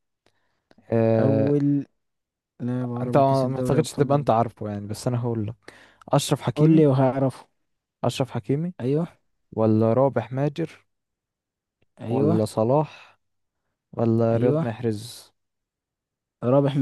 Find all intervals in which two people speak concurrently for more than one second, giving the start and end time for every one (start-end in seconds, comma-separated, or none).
3.0-4.3